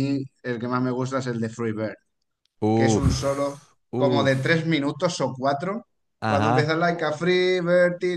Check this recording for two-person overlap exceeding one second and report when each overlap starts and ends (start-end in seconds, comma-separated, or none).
2.7-4.6